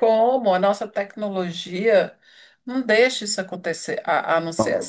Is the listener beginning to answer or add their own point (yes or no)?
no